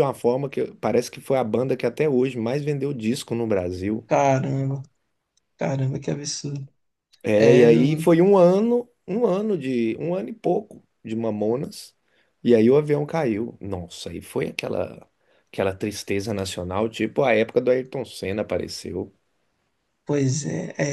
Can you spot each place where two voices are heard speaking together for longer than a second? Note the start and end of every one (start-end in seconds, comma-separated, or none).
none